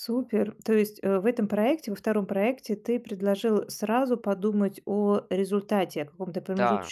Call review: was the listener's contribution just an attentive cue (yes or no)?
yes